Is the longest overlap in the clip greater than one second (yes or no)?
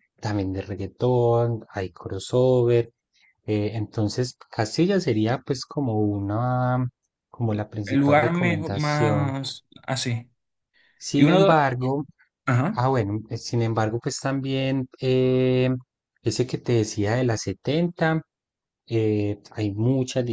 yes